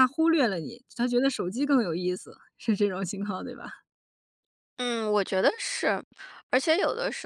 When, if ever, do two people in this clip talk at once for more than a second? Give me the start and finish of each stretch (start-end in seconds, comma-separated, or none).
none